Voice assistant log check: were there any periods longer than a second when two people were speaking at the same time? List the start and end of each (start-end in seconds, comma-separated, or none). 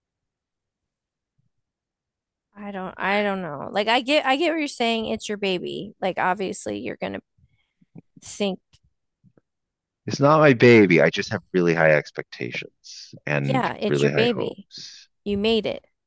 13.3-14.7